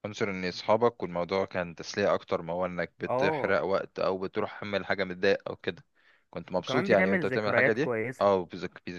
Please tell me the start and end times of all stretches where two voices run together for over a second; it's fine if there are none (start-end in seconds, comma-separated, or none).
6.6-8.3